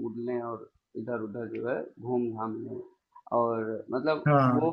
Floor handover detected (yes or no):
no